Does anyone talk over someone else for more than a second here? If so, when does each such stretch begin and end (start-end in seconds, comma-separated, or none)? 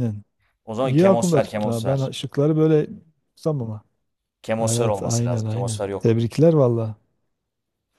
0.8-2.1, 4.6-6.2